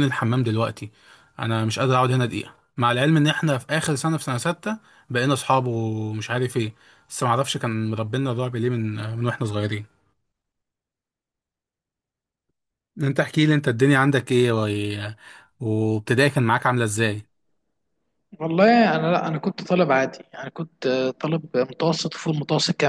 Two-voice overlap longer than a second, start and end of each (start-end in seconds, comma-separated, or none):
none